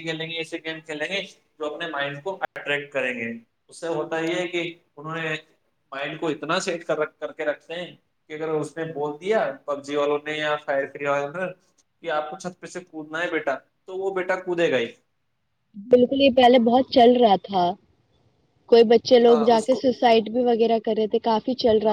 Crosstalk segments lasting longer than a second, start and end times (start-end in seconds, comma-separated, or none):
none